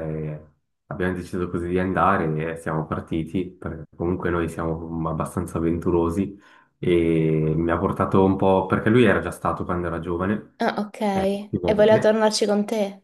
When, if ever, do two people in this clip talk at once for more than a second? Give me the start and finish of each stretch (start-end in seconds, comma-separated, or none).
none